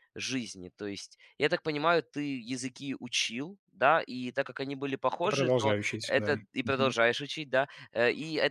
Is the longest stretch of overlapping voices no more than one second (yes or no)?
no